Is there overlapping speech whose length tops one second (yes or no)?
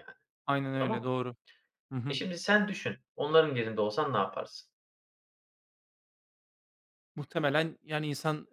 no